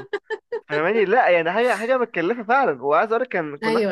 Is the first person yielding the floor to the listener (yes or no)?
no